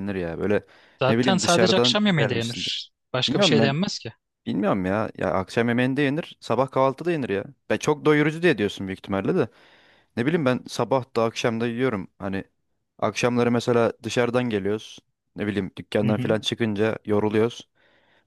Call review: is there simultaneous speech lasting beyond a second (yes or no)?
yes